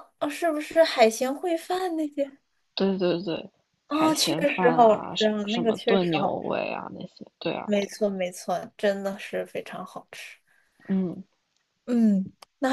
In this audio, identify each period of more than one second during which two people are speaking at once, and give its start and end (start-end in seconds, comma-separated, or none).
3.9-6.4